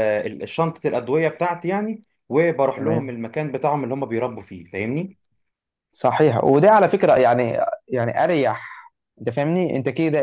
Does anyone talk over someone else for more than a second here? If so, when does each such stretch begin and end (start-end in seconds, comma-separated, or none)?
none